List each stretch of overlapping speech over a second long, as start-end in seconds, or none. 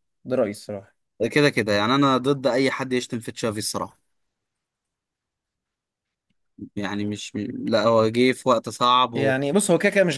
none